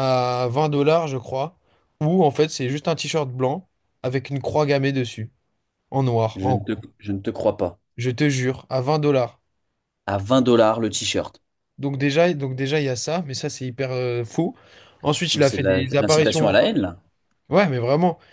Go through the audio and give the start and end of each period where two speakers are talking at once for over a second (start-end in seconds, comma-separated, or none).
15.3-16.6